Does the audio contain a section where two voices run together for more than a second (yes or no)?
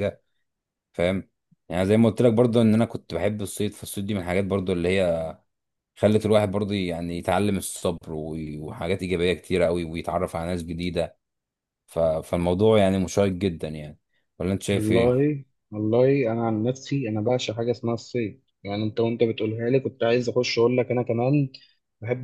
no